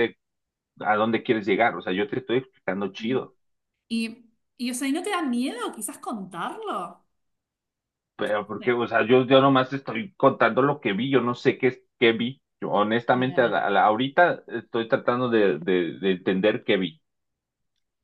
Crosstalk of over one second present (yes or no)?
no